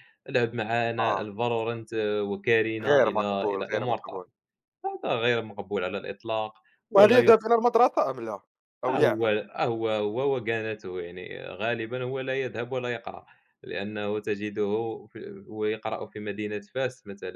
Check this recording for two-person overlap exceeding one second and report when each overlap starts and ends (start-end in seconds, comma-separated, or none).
2.8-4.2